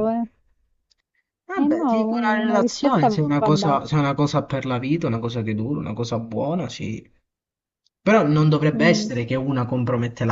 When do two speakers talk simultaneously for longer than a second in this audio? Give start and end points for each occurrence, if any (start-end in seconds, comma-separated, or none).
1.5-3.9